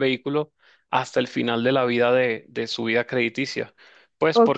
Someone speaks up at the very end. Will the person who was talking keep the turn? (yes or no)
no